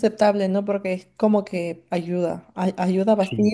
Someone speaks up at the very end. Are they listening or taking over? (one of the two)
listening